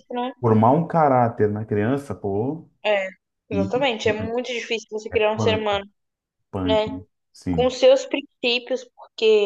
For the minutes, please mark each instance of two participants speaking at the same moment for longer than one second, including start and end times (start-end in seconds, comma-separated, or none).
none